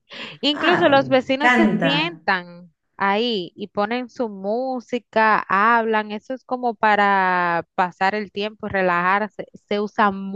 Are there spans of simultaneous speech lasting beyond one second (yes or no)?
yes